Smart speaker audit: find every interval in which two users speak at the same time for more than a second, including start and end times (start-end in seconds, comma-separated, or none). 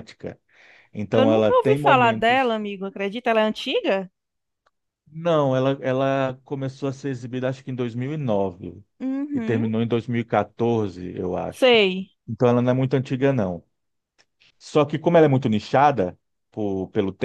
1.1-2.6